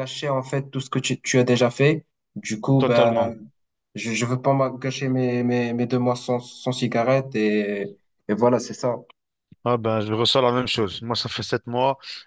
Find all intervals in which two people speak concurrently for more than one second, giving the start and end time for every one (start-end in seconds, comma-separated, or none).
none